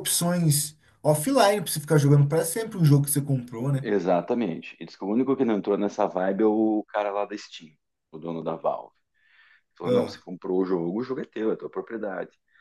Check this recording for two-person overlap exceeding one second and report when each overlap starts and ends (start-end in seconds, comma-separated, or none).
none